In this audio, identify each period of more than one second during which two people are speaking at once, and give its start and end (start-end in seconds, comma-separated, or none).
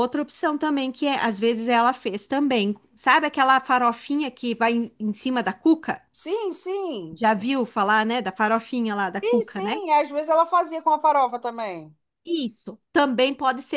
none